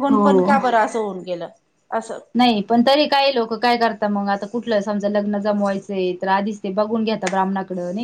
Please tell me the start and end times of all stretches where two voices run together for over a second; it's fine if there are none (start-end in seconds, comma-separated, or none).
none